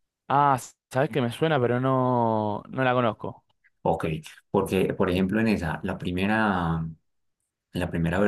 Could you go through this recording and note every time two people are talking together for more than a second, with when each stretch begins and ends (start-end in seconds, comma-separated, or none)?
none